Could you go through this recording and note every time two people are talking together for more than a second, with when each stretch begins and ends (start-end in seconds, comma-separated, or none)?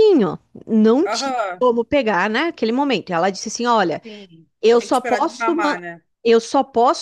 4.6-5.8